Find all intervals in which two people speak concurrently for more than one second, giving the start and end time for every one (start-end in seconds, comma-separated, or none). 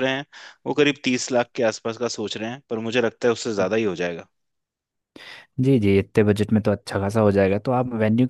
none